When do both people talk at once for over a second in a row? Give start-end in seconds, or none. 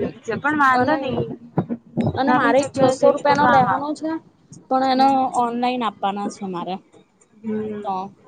2.3-4.0